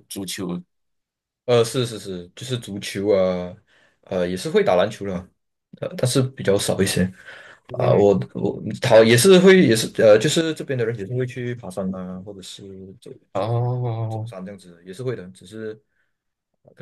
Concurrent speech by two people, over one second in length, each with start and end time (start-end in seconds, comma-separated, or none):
none